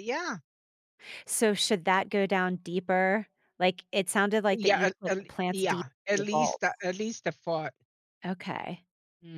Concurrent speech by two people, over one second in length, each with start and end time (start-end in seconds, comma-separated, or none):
4.5-6.7